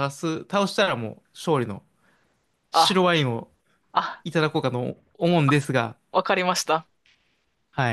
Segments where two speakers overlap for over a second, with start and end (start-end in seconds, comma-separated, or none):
none